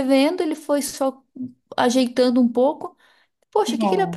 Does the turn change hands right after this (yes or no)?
no